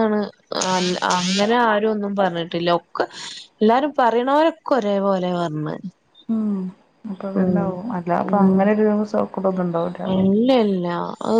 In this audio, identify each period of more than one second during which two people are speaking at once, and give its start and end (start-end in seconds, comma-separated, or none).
none